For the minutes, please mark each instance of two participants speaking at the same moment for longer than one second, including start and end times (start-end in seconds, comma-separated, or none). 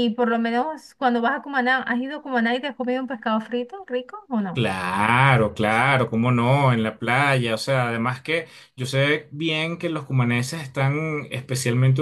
none